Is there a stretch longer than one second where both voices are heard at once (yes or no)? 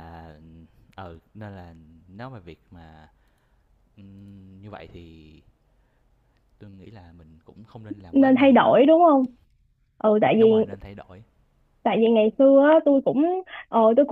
no